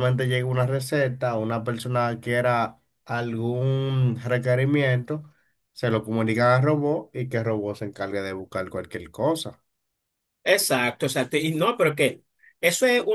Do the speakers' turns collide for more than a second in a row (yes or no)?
no